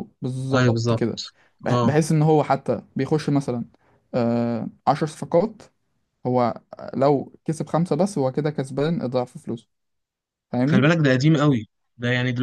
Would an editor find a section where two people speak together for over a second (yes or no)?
no